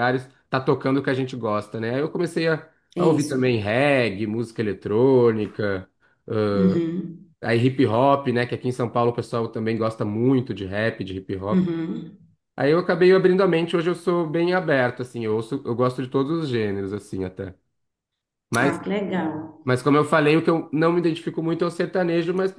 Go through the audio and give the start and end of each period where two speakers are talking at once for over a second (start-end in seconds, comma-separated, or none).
none